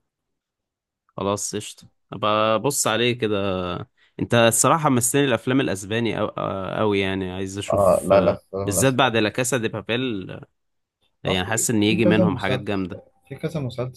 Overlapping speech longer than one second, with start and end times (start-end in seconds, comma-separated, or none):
7.7-9.2, 11.3-12.7